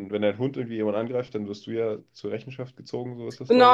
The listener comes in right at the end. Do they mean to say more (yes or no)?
yes